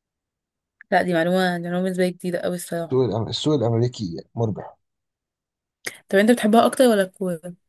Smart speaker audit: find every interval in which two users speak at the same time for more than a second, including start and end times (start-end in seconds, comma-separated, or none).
none